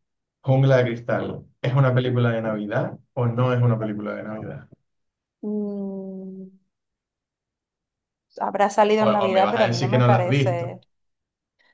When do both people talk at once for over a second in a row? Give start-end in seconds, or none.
9.0-10.6